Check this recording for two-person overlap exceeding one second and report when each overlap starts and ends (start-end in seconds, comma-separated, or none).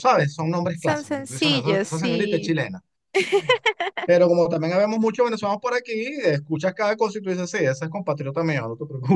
0.7-2.6